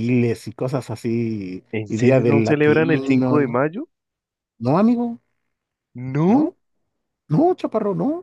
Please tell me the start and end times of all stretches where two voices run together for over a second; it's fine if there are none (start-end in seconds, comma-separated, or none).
1.7-3.6